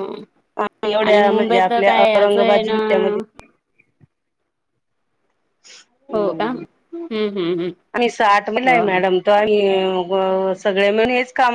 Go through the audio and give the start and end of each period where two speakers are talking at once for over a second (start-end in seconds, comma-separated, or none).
1.1-2.7